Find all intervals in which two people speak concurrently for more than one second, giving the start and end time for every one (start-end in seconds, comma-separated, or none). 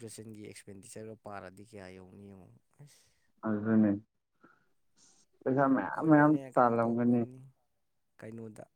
5.8-7.2